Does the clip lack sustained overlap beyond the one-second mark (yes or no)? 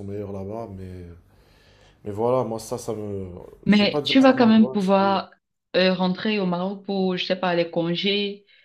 no